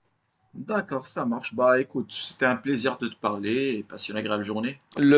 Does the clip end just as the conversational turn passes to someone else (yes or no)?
yes